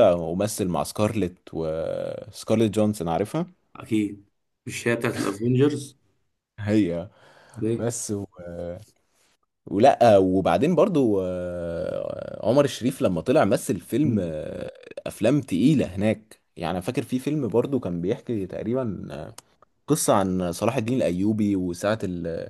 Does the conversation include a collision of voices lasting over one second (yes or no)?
no